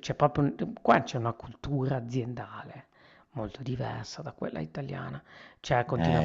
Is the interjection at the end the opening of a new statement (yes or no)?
no